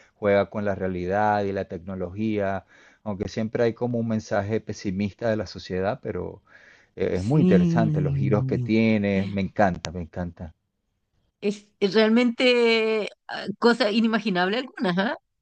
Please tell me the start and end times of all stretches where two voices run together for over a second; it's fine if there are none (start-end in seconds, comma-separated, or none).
7.2-8.7